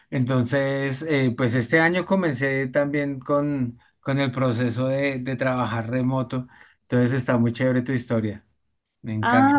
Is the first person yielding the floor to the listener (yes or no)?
yes